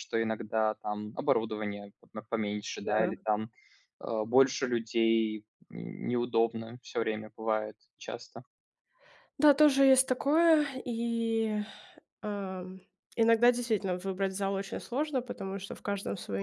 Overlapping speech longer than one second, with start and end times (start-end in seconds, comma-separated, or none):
none